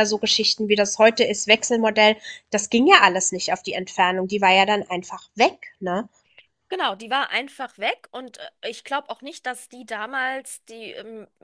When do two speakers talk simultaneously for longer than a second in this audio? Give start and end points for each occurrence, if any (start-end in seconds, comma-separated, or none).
none